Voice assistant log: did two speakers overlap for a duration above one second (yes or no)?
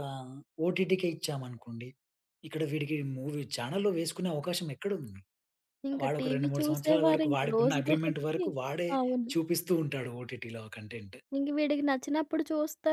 yes